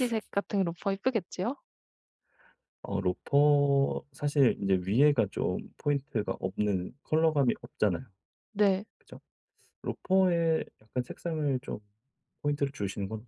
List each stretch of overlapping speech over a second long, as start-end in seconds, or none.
none